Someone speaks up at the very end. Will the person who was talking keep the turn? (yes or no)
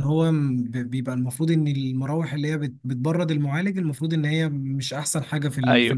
no